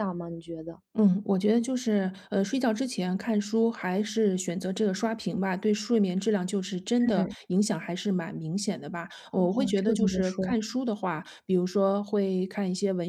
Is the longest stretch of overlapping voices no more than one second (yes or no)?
no